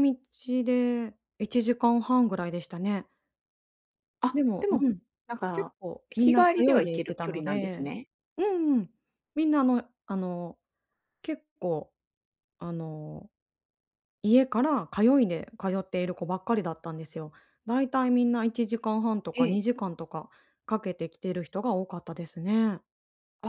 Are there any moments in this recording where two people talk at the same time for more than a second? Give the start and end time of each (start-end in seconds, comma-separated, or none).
5.5-7.9